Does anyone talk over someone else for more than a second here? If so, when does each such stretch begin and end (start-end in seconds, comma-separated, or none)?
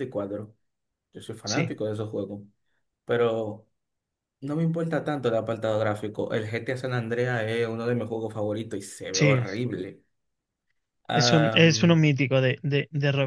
none